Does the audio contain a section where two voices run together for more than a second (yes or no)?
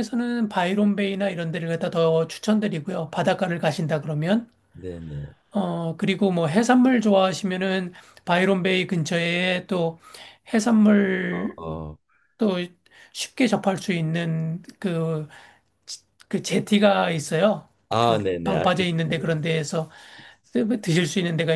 yes